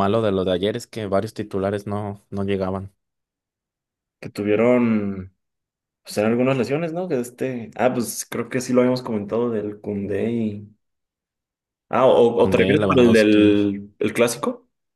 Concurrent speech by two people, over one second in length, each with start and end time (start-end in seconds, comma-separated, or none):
12.3-13.6